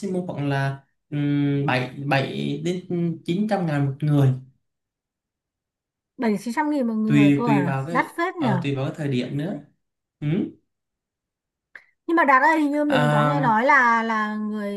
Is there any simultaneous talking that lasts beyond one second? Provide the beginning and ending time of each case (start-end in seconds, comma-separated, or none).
7.0-8.6